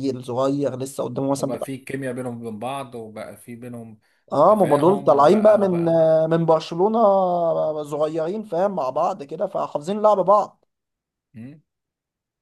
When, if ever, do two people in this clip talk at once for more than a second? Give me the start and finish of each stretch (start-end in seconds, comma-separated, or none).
4.5-5.7